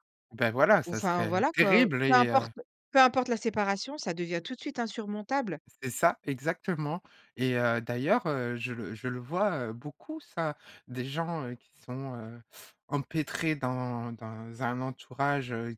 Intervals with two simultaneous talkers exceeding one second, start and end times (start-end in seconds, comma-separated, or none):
0.8-2.5